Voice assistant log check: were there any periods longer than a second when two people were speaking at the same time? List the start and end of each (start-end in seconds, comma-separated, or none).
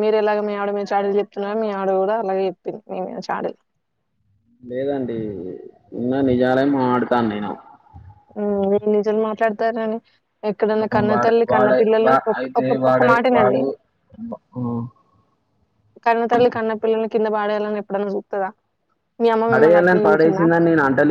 10.7-13.6